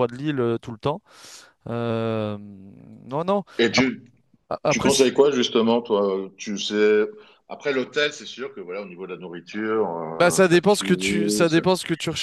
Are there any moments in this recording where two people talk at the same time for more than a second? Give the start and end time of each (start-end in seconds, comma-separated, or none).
10.2-11.6